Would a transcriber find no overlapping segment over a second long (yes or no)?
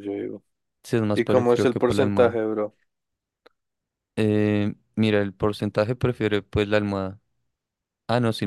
no